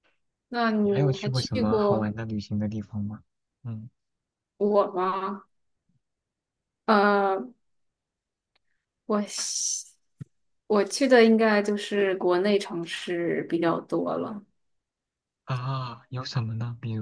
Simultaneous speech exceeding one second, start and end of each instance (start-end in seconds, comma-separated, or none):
0.8-2.1